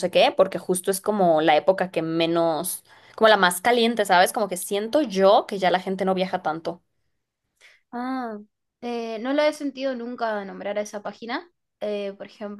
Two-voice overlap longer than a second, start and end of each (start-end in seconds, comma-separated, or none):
none